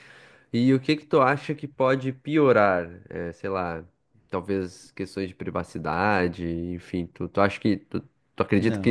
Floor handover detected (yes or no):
yes